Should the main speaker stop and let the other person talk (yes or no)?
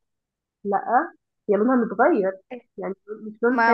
yes